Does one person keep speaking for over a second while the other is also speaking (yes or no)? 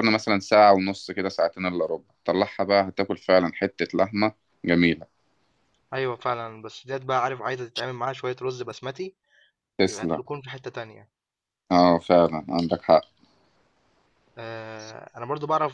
no